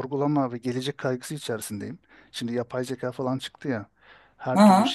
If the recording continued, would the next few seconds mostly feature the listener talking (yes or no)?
no